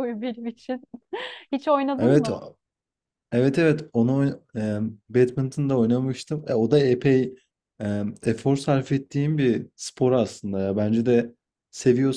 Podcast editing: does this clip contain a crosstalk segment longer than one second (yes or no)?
no